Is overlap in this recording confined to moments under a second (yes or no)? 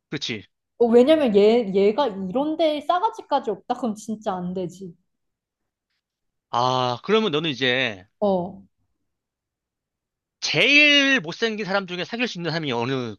yes